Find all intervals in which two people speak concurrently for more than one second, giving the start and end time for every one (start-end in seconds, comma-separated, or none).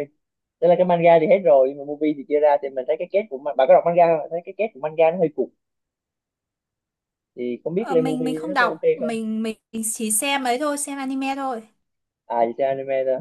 7.8-9.2